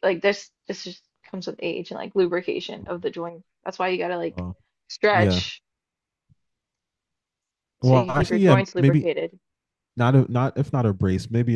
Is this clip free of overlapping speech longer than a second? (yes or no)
no